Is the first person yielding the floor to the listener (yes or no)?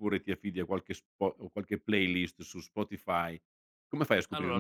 no